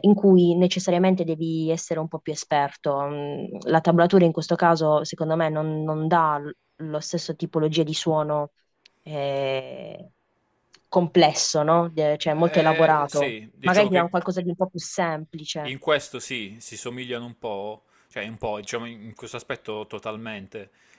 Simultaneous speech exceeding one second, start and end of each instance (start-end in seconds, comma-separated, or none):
12.3-14.1